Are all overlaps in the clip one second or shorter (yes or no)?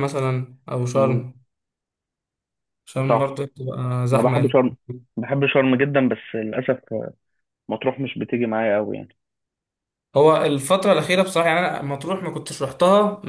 yes